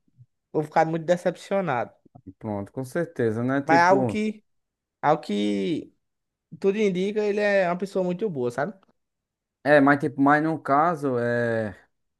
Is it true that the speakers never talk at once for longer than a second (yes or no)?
yes